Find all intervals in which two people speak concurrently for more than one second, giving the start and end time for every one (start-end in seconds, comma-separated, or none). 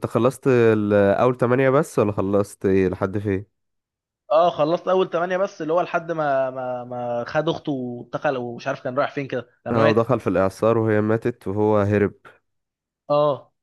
none